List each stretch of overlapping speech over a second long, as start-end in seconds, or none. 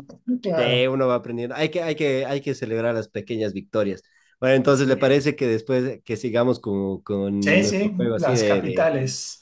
7.4-8.9